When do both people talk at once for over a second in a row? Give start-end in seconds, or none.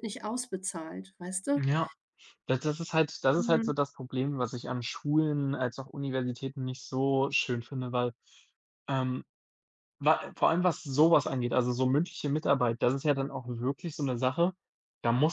none